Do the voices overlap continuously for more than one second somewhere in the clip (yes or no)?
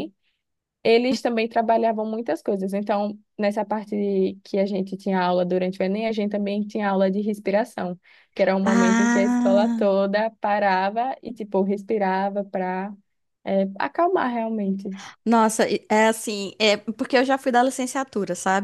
yes